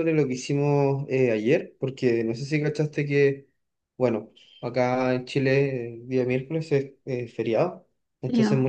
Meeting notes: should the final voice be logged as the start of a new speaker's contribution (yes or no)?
no